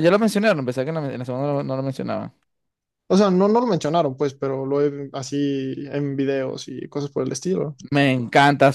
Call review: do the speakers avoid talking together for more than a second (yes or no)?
yes